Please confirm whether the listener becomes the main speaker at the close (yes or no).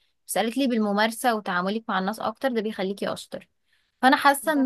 no